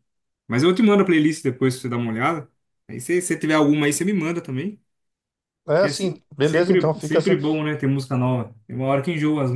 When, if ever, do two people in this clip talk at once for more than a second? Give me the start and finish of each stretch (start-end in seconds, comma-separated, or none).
5.8-7.4